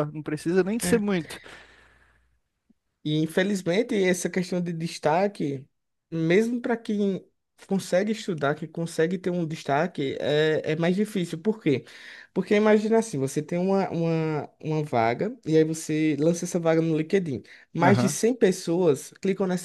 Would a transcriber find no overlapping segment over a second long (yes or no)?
yes